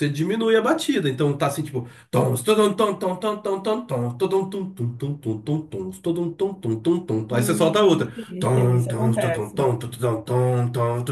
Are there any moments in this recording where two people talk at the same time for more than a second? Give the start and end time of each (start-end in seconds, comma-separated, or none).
7.3-9.6